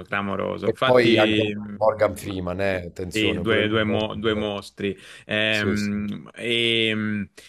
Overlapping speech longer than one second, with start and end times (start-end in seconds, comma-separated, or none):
0.6-2.4, 3.1-4.6